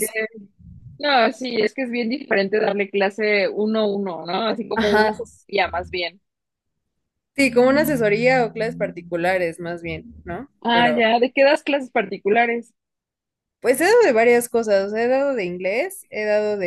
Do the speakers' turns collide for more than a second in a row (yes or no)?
no